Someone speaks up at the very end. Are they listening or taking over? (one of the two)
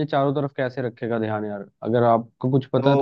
taking over